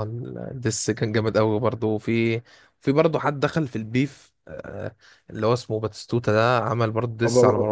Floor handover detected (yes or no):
yes